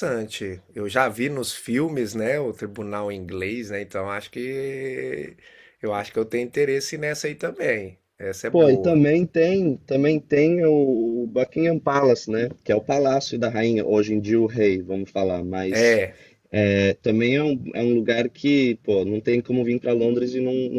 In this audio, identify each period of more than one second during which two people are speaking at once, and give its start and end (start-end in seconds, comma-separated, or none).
none